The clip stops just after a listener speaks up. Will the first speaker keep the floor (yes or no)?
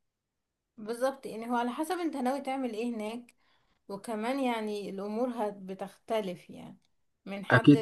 yes